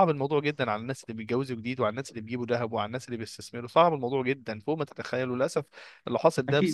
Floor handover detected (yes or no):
no